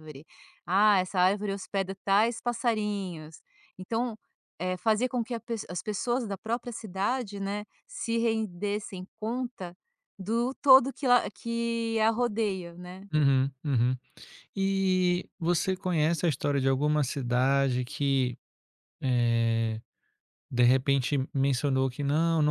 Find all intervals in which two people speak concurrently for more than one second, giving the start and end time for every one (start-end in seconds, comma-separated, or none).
none